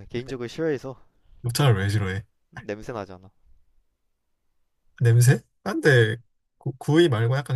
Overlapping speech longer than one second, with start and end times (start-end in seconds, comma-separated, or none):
none